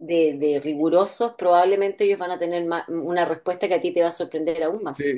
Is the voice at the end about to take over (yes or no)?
yes